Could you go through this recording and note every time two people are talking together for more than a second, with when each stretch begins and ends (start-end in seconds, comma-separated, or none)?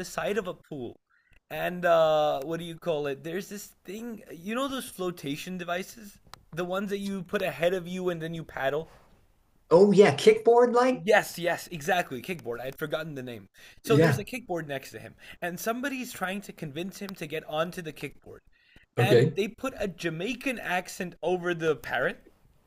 none